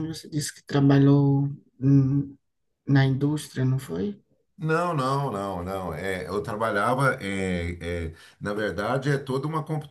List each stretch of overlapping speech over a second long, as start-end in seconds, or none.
none